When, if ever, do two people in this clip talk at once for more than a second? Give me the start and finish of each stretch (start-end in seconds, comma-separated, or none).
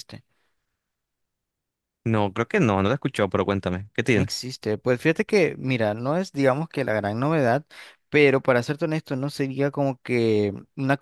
none